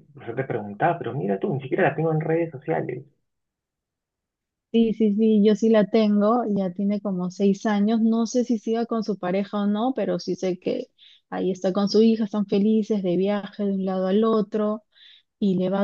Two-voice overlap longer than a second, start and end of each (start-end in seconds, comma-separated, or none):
none